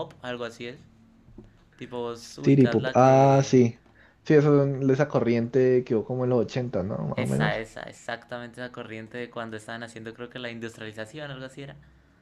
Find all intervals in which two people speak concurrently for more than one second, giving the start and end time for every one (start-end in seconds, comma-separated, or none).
2.4-3.6